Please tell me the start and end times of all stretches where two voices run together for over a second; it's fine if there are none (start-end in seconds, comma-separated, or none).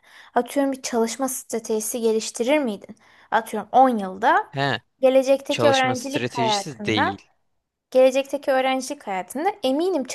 5.5-7.2